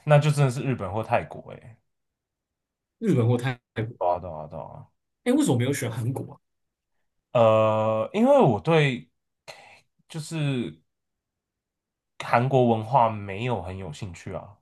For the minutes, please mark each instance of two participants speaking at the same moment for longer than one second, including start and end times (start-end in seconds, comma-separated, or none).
none